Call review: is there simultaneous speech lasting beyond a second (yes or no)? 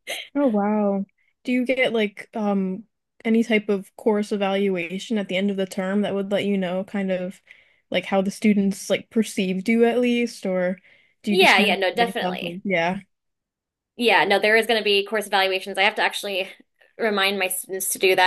yes